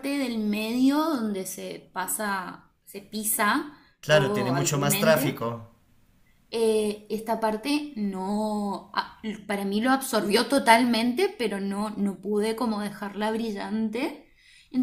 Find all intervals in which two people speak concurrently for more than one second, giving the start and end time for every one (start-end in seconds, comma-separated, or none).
4.0-5.4